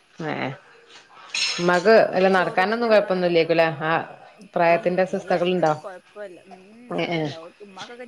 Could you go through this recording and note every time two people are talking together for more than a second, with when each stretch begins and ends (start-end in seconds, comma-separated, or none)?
1.6-3.5